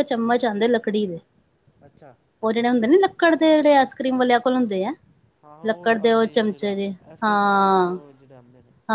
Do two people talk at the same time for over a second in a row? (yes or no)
yes